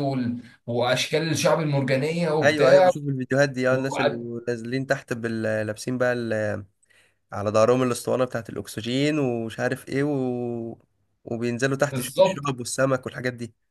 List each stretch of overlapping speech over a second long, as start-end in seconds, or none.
none